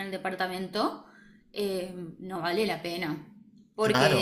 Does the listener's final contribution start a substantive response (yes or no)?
no